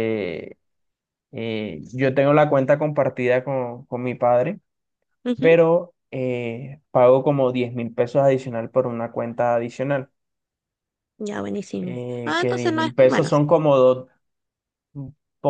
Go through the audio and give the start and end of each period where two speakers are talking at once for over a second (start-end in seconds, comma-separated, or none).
11.8-13.3